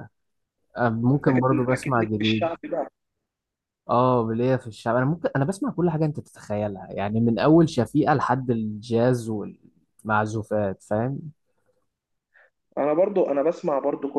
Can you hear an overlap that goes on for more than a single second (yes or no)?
yes